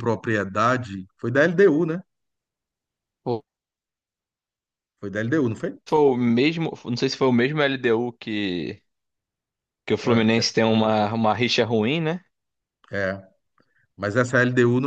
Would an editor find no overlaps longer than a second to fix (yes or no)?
yes